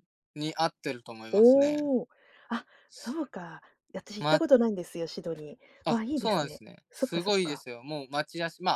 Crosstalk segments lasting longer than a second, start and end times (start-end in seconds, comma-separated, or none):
5.8-7.6